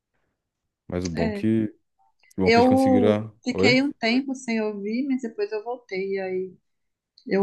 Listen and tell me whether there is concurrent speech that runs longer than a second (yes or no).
yes